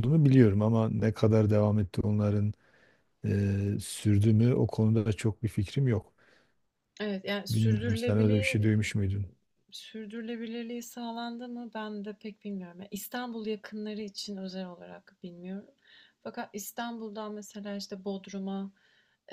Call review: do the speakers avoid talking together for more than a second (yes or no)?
no